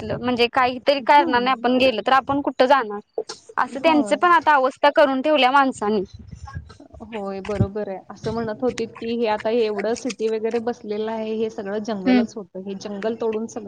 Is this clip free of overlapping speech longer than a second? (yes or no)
yes